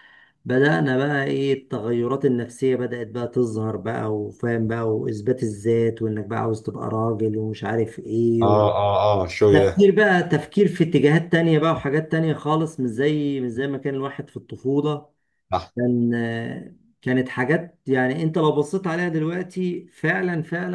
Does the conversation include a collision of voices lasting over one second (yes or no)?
no